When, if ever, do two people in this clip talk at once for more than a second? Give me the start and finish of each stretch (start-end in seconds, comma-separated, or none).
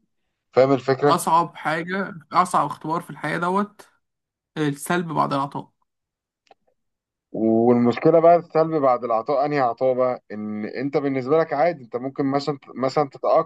none